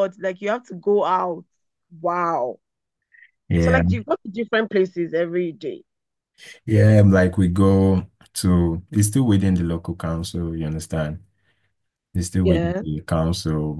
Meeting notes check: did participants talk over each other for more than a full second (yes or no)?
no